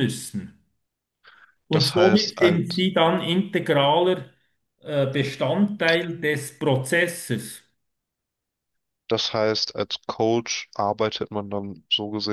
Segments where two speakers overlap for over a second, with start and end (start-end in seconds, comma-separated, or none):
1.7-2.9